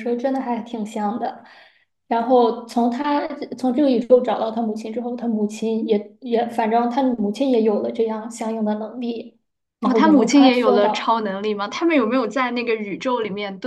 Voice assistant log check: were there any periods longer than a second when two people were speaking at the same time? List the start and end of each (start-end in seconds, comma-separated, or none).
9.8-11.2